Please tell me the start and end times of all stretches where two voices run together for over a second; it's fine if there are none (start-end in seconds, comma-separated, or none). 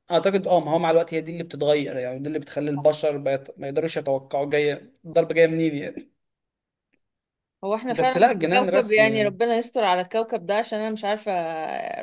7.9-9.3